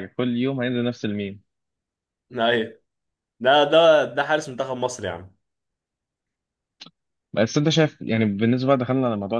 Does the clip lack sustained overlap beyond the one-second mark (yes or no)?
yes